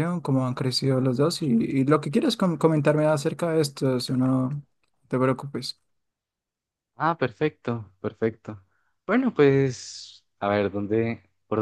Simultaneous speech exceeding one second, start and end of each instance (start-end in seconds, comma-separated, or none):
none